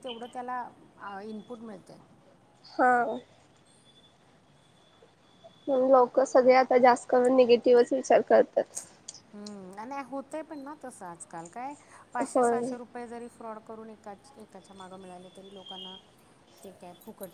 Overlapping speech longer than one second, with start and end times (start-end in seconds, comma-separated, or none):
none